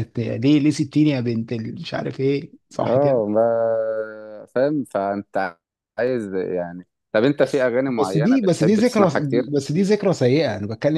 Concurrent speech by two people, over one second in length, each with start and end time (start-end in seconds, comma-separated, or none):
7.4-9.1